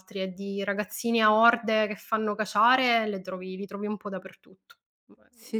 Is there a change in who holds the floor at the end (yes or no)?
yes